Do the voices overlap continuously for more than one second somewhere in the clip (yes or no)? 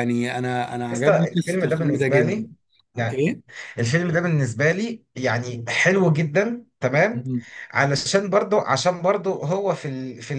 yes